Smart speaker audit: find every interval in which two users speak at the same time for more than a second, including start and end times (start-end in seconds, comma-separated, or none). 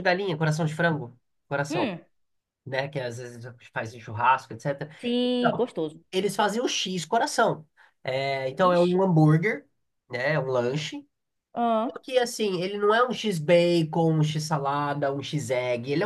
none